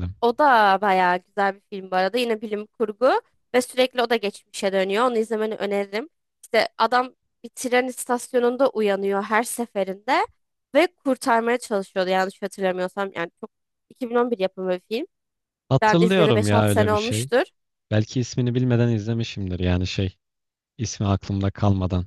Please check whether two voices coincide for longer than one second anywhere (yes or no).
yes